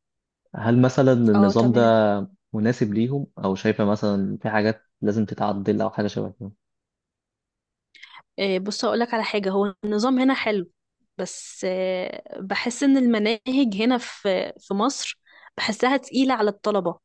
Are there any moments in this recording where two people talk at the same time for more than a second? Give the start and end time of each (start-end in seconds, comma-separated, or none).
none